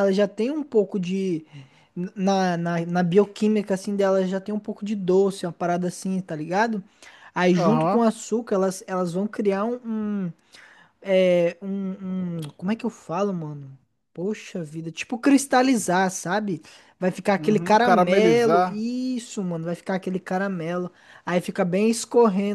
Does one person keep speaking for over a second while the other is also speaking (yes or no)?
yes